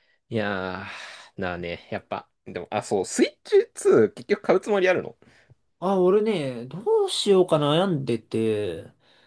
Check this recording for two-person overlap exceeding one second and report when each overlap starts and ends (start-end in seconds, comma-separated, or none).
none